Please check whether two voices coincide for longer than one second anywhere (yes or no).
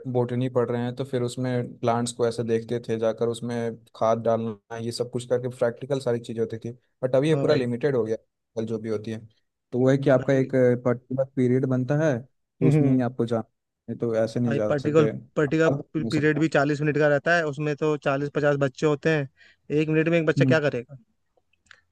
yes